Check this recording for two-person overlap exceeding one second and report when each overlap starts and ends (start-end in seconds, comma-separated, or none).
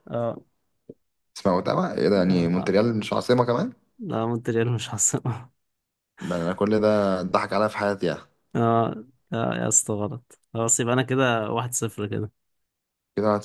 none